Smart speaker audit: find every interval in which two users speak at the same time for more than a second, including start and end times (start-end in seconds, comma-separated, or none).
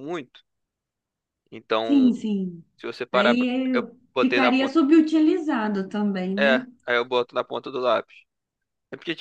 3.1-4.8